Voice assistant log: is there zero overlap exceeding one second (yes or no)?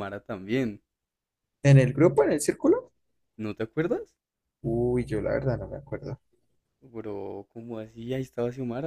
yes